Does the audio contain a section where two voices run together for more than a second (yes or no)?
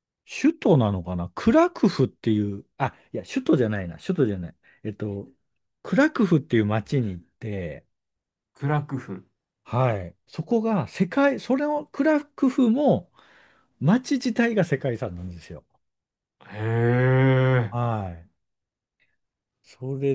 no